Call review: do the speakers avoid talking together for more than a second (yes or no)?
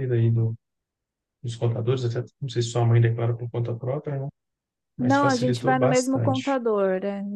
no